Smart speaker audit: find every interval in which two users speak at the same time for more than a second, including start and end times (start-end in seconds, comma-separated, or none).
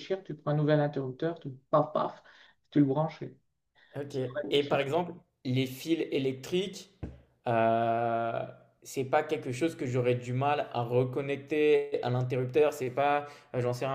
none